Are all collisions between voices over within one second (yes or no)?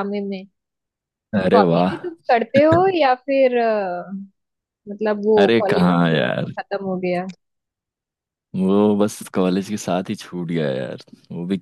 yes